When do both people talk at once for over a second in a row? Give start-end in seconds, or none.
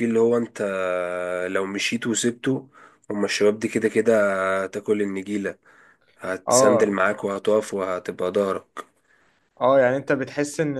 none